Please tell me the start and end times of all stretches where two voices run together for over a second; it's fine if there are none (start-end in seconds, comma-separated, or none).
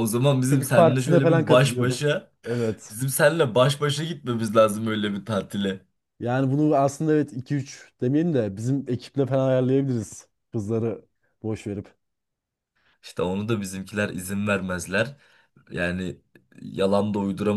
0.5-2.1